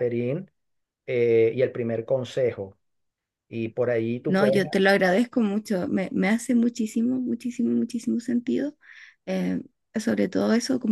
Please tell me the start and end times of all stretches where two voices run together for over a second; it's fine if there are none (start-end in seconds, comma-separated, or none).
none